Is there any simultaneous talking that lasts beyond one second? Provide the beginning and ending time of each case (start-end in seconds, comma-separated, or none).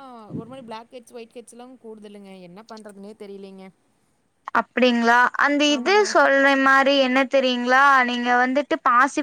none